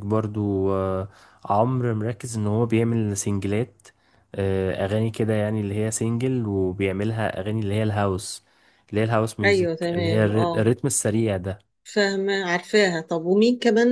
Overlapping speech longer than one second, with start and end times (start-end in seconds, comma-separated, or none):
9.4-10.7